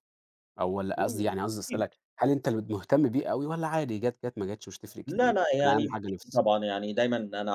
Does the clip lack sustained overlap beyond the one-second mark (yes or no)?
no